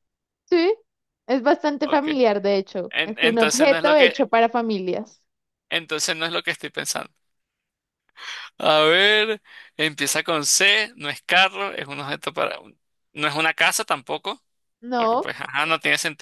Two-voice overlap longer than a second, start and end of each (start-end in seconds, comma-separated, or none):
2.9-4.3